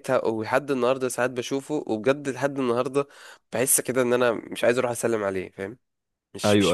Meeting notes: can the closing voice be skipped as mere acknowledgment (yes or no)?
no